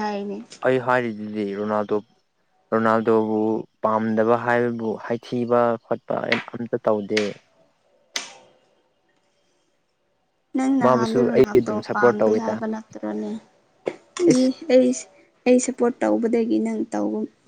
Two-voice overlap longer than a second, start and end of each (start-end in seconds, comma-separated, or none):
10.8-12.5